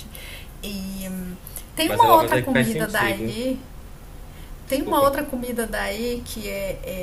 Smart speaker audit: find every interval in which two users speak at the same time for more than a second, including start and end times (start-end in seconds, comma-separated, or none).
1.9-3.4